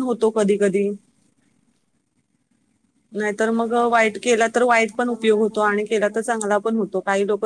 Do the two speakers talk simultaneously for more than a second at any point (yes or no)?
yes